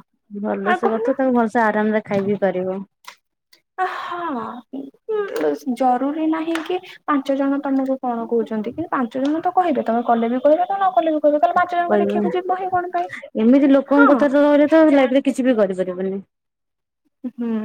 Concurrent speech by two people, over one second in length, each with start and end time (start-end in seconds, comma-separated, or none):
none